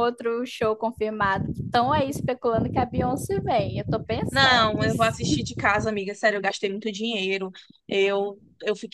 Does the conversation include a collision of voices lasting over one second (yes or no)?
no